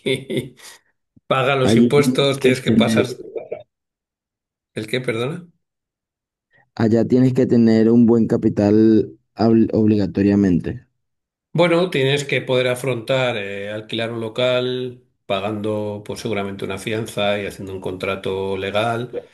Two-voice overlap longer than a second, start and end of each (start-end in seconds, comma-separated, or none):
1.6-3.1